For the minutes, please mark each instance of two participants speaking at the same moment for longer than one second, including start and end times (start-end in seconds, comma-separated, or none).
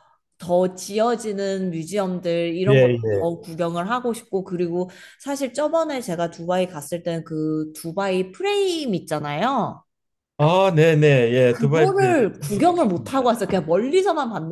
11.5-13.2